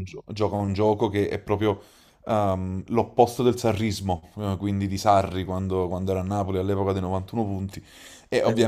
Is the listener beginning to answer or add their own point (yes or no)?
no